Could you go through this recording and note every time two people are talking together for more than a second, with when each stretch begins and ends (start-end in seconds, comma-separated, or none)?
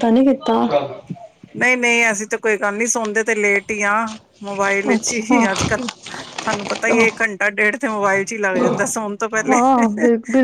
none